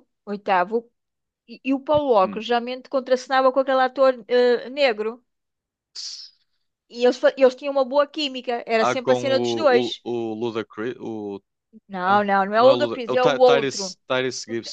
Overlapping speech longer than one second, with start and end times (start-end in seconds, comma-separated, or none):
8.8-10.0, 12.1-13.9